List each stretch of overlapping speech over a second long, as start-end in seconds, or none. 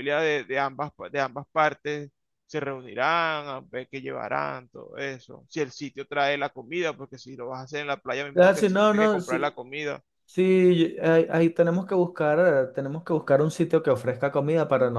8.3-9.6